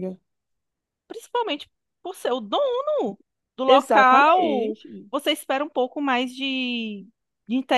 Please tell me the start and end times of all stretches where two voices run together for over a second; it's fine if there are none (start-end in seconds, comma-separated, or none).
3.7-5.1